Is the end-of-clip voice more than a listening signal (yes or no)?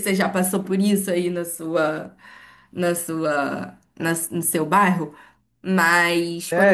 yes